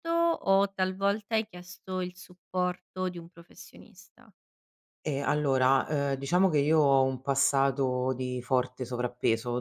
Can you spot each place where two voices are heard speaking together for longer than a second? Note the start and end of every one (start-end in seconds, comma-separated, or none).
none